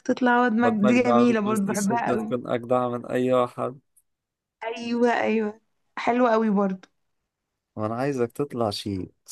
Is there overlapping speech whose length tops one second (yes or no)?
yes